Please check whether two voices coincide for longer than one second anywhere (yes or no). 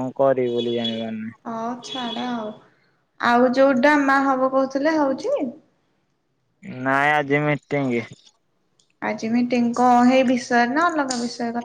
no